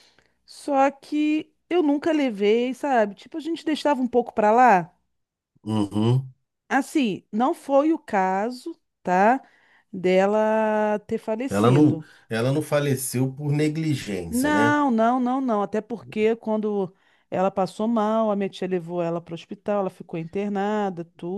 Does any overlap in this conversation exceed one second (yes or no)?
no